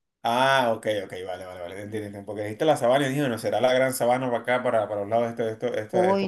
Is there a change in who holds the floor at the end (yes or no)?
yes